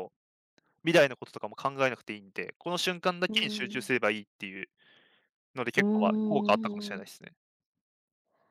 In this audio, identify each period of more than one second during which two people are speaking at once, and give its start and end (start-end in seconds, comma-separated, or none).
5.8-7.2